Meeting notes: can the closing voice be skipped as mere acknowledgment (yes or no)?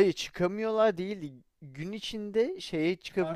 yes